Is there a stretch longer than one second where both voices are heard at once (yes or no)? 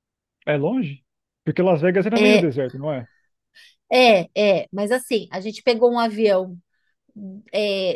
no